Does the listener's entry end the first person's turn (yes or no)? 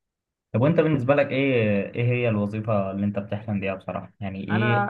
no